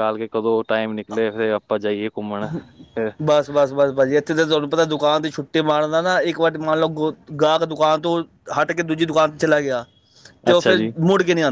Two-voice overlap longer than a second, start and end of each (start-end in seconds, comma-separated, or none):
none